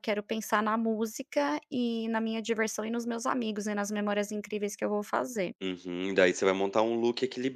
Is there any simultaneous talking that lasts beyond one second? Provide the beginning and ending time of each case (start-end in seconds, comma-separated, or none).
none